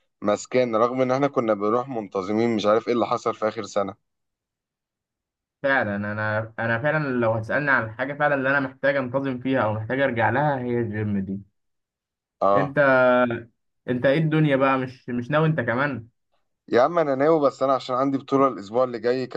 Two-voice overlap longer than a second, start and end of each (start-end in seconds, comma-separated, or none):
none